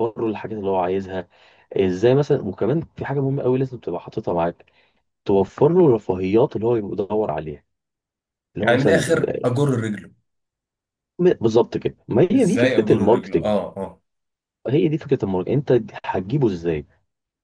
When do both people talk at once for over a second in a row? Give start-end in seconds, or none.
12.3-13.5